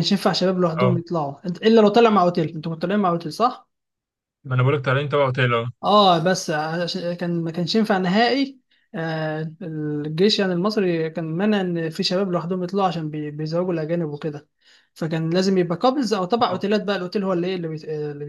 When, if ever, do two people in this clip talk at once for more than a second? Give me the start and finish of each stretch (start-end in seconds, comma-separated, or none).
none